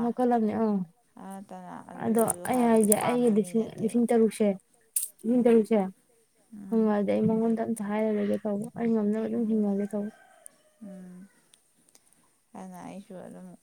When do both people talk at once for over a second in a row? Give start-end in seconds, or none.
2.0-4.0